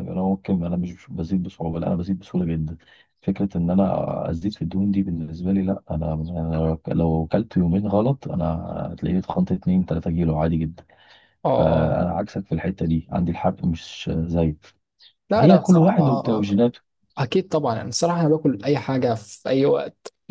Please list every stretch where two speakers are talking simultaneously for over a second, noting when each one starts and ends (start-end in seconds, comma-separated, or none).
15.3-16.6